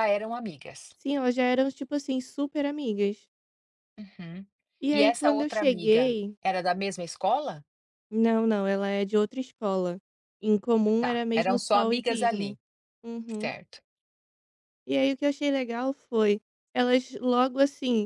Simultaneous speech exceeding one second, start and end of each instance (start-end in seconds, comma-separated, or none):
4.9-6.3, 11.0-12.6